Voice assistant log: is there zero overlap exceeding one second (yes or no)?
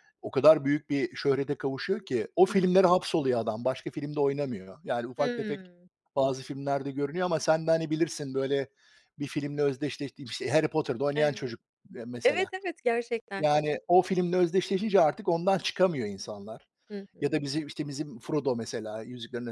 yes